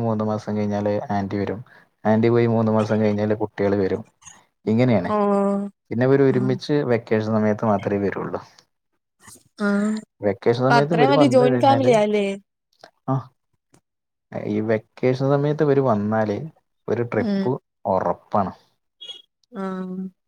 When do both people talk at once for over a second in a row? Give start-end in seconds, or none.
10.3-11.9